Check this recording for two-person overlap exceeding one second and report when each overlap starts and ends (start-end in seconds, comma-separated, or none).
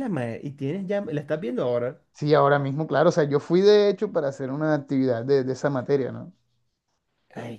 none